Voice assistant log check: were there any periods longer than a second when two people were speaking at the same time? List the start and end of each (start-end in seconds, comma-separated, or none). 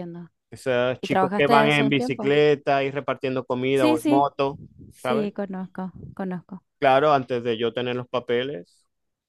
1.0-2.4